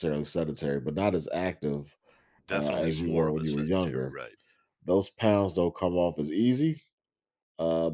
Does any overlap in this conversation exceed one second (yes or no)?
yes